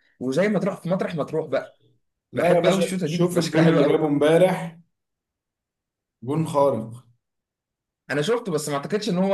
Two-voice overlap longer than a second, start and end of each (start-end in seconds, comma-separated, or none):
2.4-4.1